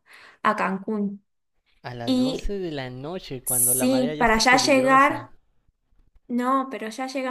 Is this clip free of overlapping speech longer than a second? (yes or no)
no